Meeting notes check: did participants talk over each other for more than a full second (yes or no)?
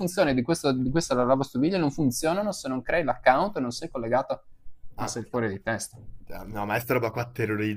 no